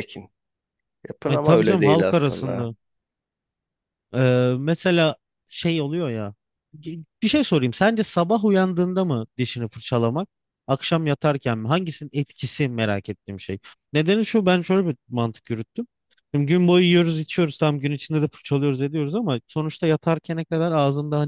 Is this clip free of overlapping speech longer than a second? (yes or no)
no